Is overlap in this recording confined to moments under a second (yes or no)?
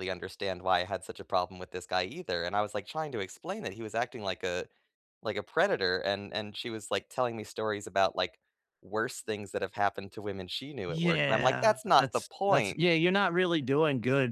no